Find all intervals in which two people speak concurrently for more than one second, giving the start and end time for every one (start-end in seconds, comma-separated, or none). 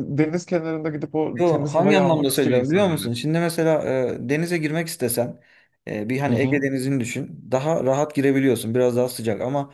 1.4-3.1